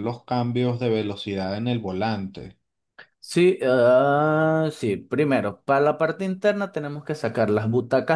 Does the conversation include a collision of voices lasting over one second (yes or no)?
no